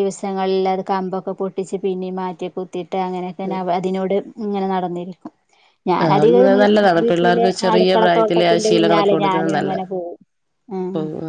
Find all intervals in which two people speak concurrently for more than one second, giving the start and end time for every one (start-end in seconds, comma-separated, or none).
7.7-9.7